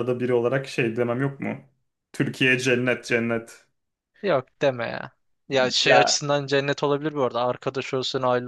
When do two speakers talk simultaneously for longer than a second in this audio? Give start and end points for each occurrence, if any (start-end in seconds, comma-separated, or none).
none